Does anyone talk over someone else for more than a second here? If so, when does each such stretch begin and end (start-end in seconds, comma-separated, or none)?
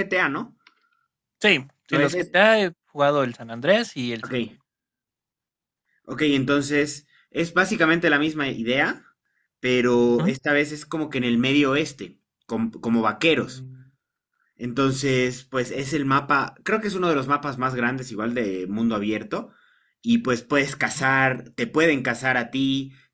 none